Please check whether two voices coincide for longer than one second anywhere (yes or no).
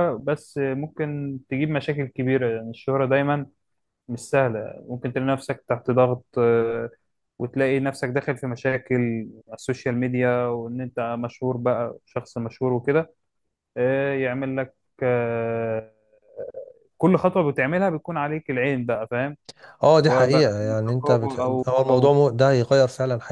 yes